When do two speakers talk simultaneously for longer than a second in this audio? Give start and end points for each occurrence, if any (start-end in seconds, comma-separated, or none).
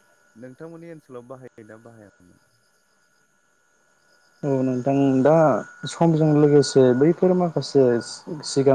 none